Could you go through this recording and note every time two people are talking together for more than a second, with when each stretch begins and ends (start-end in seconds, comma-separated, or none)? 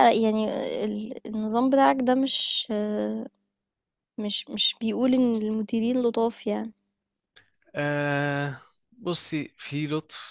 none